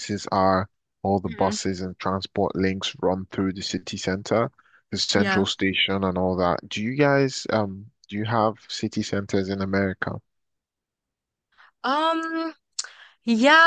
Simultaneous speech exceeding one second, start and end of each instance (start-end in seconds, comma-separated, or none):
none